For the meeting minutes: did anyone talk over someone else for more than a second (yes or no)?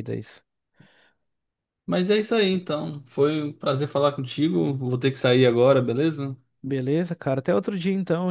no